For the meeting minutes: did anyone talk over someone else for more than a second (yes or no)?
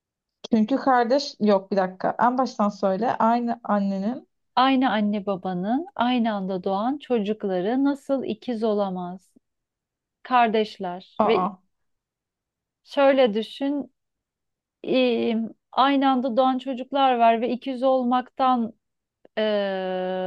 no